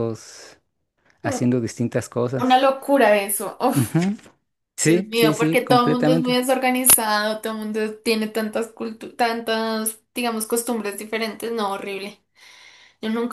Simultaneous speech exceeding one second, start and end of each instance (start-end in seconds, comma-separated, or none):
4.8-6.4